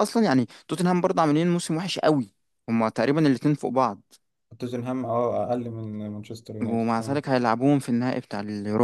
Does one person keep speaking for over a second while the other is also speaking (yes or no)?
no